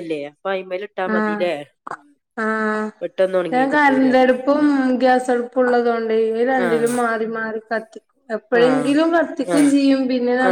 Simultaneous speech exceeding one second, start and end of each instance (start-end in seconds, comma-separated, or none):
none